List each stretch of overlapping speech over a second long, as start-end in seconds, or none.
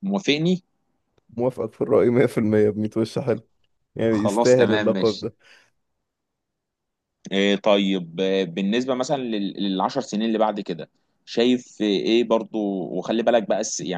4.1-5.3